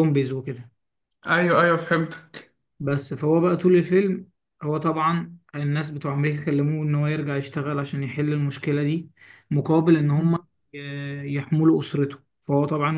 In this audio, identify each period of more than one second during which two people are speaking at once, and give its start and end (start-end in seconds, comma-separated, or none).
none